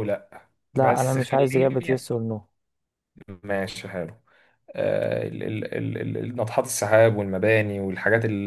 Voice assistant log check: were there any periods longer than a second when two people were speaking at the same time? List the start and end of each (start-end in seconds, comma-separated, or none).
0.8-2.1